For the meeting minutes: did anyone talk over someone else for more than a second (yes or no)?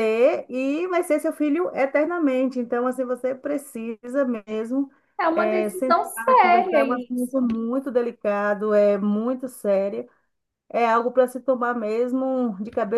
yes